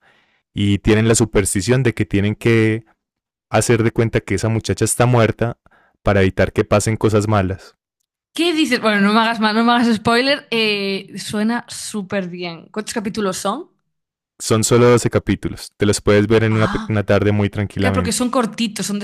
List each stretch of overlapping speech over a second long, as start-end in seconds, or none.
none